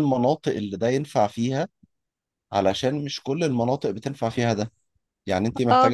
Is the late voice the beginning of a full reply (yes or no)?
no